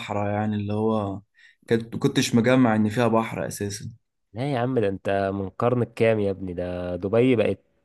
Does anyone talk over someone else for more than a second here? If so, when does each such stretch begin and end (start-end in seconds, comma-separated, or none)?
none